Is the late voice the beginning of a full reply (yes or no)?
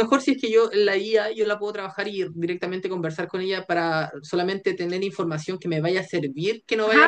yes